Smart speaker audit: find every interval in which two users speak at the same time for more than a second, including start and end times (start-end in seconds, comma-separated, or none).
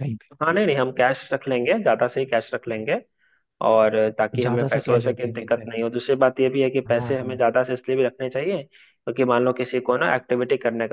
4.5-5.8